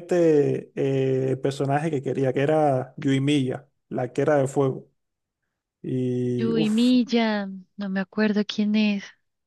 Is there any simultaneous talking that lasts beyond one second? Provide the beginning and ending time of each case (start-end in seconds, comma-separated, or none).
none